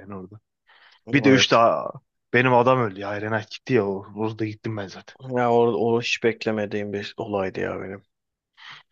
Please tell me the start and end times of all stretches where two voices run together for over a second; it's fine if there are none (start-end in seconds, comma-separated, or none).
none